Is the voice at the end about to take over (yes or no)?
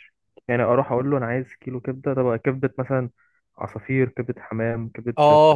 yes